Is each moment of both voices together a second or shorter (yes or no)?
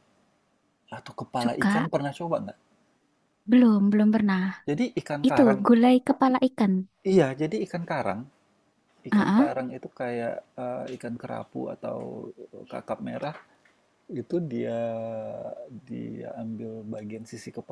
yes